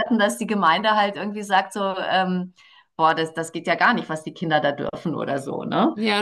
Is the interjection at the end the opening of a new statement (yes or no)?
yes